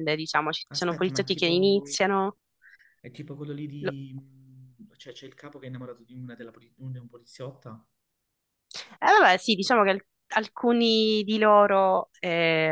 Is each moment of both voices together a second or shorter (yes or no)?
no